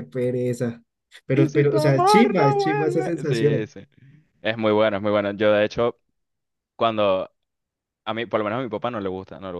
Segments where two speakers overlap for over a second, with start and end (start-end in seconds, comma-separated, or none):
1.3-3.7